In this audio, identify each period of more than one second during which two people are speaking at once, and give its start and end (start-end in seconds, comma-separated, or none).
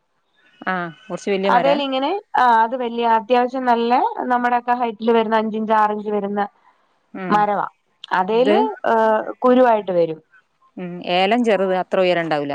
none